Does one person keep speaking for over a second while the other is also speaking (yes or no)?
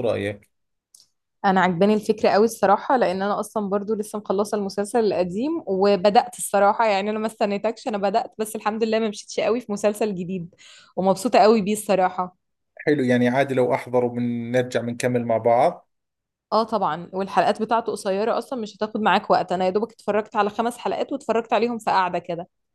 no